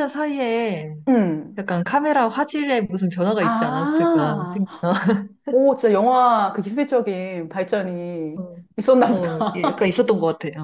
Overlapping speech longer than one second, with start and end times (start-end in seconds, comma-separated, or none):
3.4-4.6